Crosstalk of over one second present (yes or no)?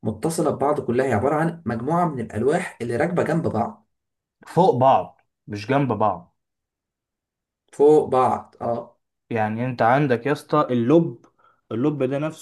no